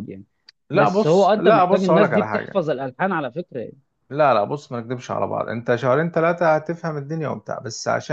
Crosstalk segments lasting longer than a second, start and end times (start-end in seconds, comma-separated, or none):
0.7-2.6